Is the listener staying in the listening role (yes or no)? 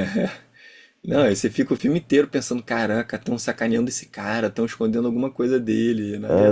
no